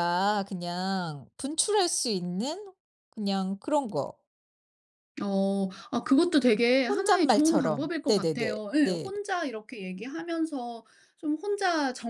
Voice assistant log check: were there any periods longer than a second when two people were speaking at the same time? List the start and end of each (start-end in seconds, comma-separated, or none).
6.9-9.1